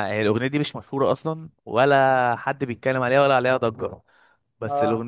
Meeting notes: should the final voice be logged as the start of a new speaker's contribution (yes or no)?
no